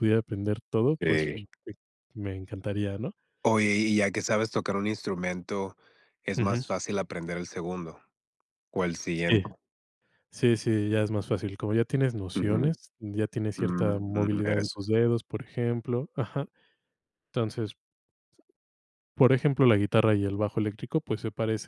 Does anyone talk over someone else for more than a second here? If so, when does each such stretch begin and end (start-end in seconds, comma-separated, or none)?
13.6-14.8